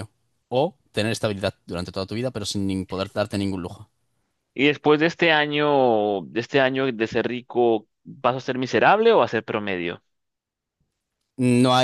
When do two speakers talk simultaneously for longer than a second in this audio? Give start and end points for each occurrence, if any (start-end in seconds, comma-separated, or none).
none